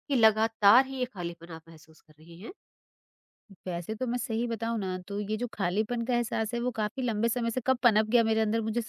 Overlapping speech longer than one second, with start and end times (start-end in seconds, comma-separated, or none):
none